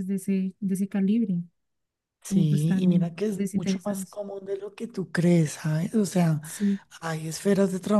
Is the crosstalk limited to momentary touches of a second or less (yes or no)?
no